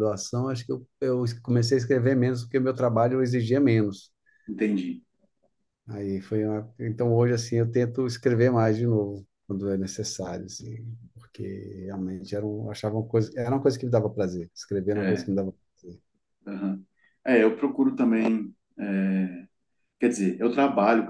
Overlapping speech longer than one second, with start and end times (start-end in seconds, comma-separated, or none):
none